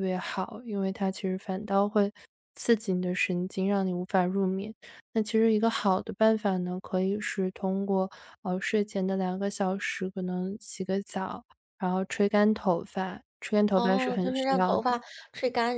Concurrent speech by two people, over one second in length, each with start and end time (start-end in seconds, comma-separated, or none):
13.7-14.9